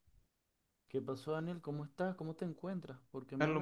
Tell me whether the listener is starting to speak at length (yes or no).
yes